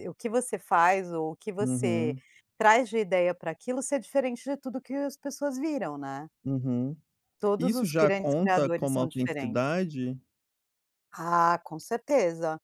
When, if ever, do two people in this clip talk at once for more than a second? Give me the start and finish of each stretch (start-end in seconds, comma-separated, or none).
7.6-9.6